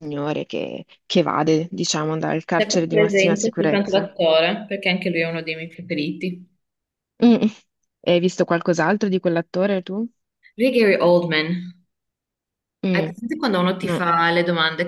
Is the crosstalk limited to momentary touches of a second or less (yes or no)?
no